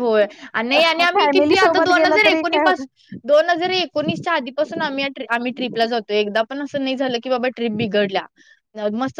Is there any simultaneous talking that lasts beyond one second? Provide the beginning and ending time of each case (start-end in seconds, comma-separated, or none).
1.1-2.9